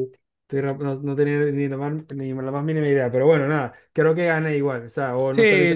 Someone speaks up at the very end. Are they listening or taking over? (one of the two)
taking over